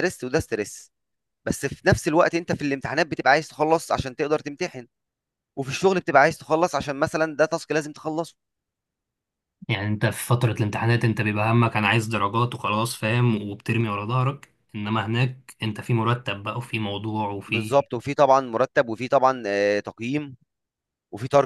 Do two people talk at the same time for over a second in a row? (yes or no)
no